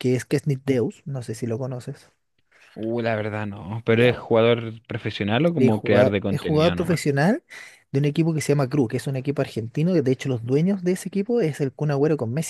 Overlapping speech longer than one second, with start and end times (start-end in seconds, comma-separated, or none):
5.6-7.0